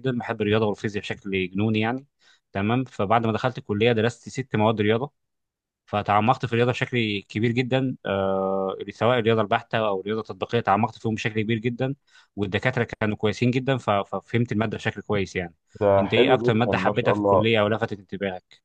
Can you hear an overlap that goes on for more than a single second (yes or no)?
yes